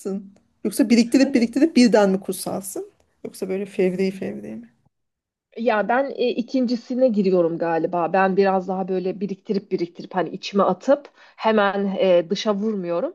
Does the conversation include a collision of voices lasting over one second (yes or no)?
no